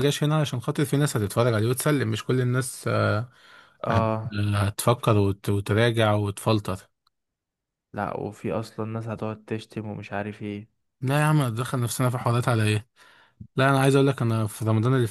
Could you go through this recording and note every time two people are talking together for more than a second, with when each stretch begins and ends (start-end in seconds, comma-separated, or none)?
none